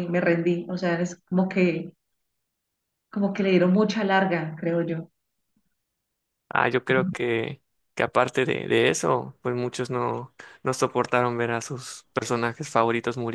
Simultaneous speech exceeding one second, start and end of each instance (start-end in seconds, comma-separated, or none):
none